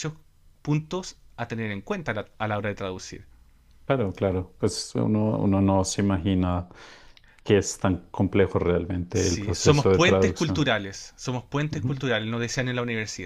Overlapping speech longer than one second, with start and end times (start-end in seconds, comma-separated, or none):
9.1-10.6